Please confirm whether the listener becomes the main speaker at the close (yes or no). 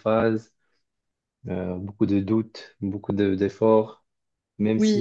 no